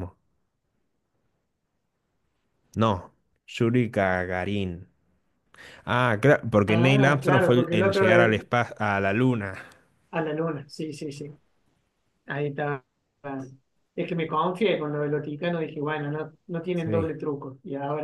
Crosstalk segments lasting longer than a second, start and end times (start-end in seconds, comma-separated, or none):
6.7-8.4